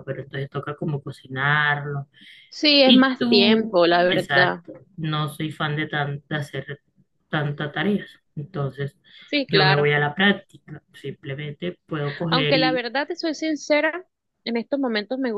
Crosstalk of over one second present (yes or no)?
yes